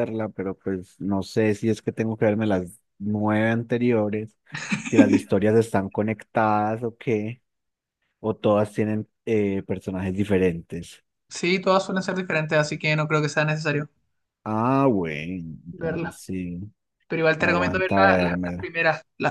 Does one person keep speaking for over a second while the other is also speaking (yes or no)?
yes